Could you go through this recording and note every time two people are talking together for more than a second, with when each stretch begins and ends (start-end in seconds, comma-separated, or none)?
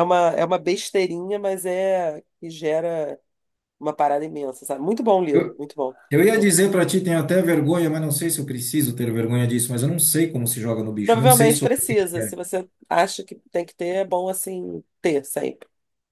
11.1-12.3